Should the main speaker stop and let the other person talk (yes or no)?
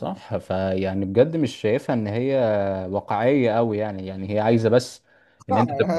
yes